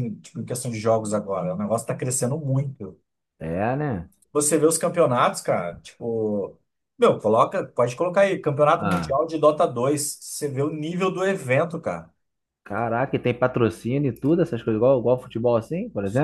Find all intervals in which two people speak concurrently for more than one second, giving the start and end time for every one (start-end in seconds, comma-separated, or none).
none